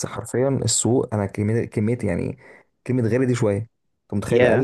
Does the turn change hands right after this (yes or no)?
no